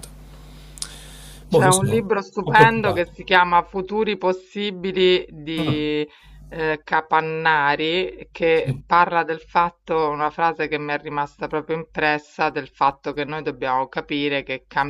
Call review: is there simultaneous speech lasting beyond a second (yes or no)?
yes